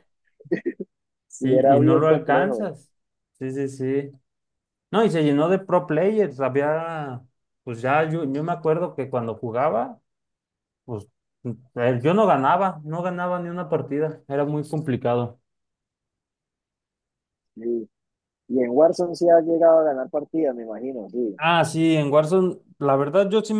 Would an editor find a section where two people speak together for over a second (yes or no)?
yes